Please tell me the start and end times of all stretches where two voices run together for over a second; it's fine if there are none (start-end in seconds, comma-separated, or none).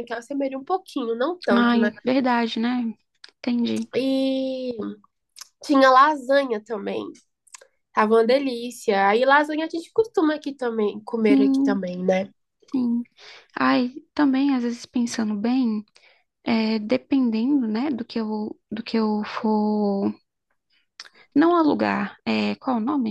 none